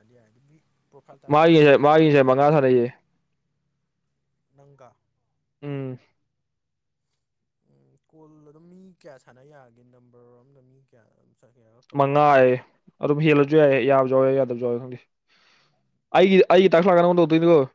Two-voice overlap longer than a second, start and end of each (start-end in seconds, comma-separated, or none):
1.3-2.7